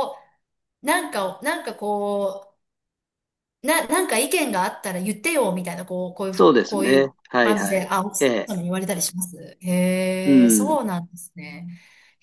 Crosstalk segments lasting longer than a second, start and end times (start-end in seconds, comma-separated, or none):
6.3-8.5